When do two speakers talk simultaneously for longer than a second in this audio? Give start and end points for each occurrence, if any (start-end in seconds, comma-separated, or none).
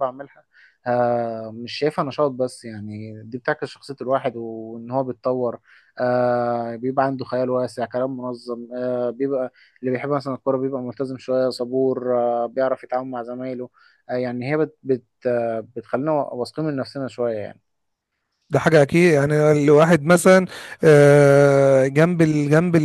none